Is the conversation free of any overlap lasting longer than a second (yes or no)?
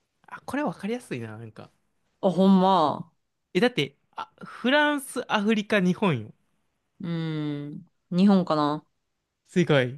yes